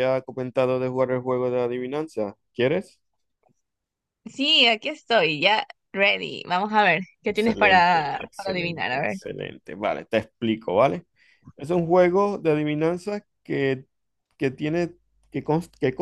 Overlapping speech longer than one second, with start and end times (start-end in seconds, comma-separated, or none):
7.3-9.2